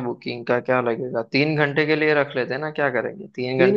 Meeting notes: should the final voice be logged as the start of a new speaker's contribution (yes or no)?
yes